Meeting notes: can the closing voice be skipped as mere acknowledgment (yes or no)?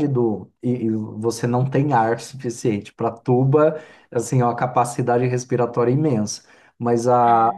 yes